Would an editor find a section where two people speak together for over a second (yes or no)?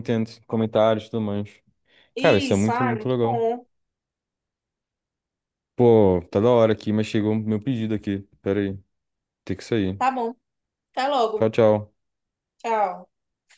yes